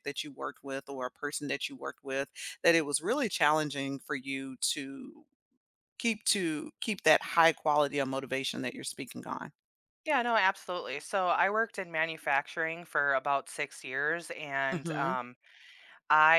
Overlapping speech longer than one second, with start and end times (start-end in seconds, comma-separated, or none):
none